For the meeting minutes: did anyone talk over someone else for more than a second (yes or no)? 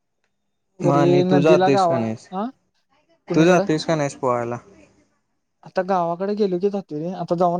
yes